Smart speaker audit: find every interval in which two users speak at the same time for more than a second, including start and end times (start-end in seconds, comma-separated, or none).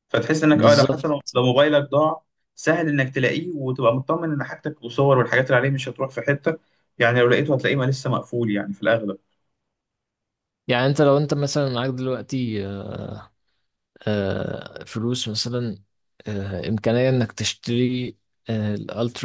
none